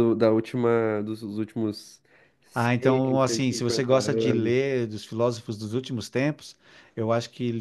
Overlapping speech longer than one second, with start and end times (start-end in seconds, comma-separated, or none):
2.5-4.6